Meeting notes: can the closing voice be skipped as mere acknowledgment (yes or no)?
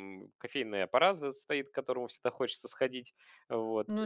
yes